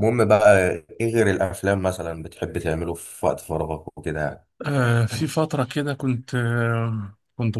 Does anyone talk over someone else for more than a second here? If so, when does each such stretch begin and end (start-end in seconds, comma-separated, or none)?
none